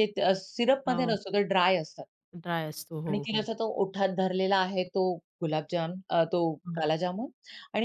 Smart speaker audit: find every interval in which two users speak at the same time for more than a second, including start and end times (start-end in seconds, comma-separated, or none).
none